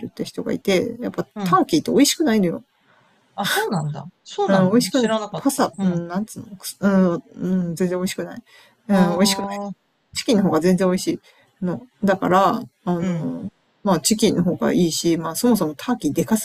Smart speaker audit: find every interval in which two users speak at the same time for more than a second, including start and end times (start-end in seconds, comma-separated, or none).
4.5-6.0